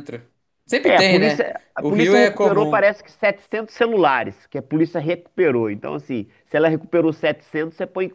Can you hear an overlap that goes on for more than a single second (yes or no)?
yes